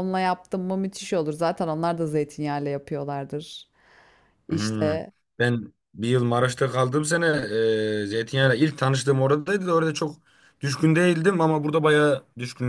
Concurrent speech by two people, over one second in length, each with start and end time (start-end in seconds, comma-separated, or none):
none